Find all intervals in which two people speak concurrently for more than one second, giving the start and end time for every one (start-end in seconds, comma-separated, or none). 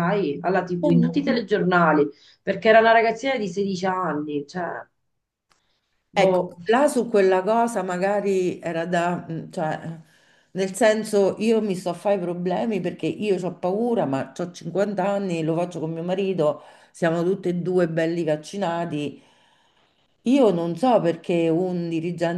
none